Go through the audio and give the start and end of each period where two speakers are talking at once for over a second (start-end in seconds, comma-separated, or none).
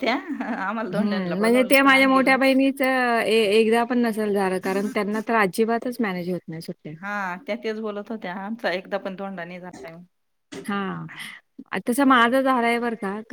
1.0-2.4